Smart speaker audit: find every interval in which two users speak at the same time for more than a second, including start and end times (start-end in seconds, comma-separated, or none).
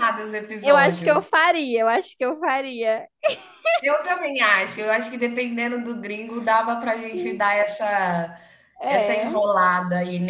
none